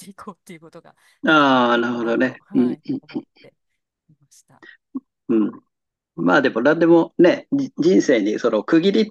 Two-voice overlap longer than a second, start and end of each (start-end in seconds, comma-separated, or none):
1.2-2.8